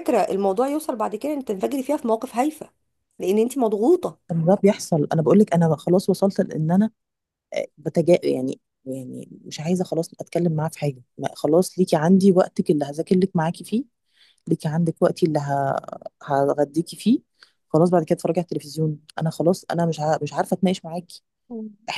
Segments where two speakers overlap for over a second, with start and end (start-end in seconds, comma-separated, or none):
none